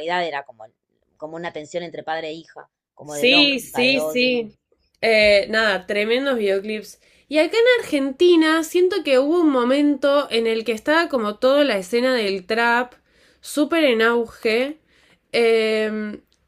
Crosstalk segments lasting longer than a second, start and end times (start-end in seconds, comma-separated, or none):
3.0-4.3